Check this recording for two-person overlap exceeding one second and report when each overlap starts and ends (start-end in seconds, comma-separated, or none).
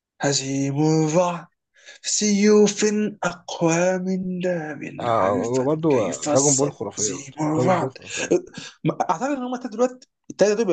5.0-8.0